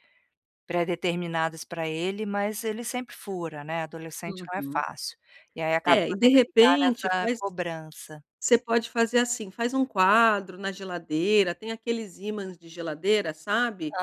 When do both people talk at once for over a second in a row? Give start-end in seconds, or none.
5.8-7.4